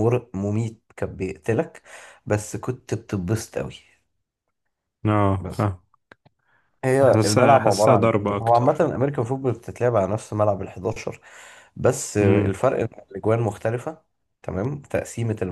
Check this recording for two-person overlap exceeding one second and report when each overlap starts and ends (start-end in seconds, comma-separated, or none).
7.0-8.9